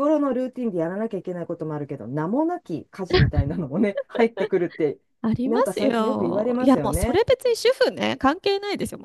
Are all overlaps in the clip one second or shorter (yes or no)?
no